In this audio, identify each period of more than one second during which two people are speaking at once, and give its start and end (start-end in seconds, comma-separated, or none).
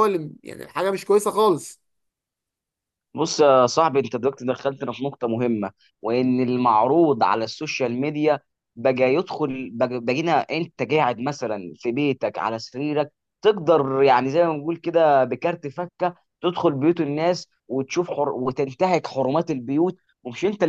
none